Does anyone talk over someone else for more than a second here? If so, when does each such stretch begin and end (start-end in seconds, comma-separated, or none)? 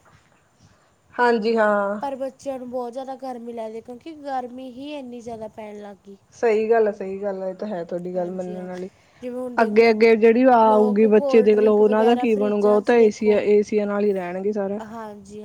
10.7-13.4